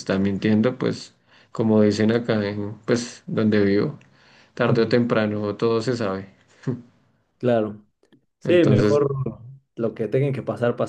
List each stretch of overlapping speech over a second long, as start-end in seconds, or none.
none